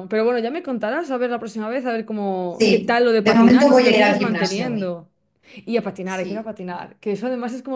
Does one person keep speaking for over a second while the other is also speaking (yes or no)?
yes